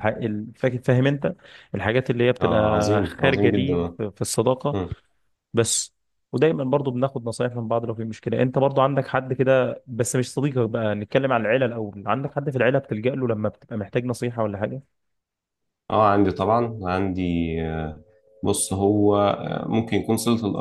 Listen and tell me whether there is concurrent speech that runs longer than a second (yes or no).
yes